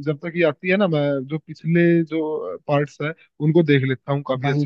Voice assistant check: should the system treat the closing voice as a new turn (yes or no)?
yes